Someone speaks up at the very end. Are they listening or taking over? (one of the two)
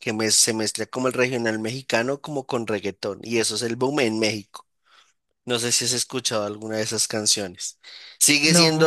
listening